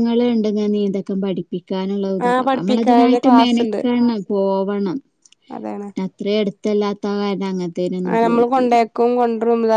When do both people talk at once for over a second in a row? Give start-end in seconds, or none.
2.3-3.8